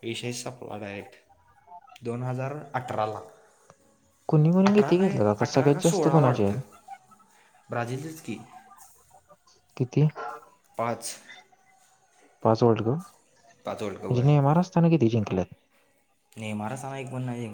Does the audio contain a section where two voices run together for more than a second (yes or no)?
yes